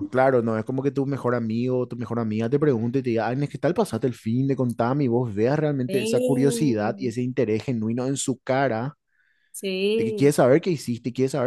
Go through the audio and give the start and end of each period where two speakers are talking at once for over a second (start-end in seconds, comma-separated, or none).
5.9-7.2